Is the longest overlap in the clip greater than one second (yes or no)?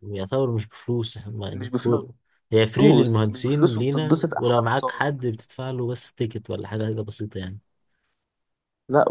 yes